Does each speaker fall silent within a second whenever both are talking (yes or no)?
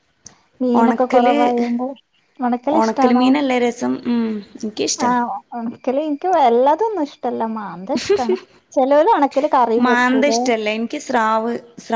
yes